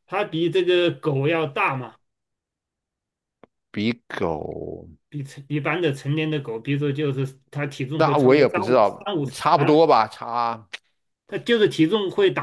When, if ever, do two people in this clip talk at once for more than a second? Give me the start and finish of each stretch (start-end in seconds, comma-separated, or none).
8.0-9.8